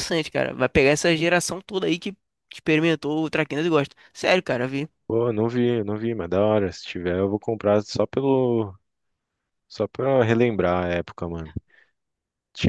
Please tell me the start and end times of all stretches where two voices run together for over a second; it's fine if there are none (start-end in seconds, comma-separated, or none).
none